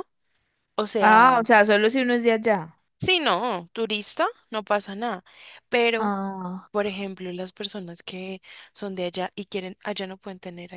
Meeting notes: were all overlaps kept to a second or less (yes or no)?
yes